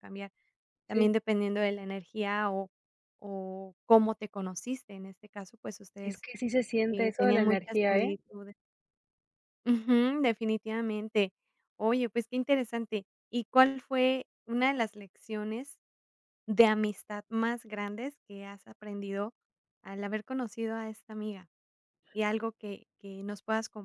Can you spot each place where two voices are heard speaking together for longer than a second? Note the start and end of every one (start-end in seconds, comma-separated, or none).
6.9-8.2